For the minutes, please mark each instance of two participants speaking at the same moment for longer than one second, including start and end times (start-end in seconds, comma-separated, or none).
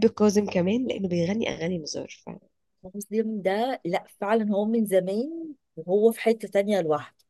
none